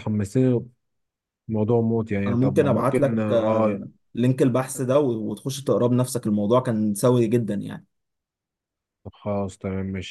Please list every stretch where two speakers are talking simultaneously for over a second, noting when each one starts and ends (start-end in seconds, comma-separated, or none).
2.2-3.8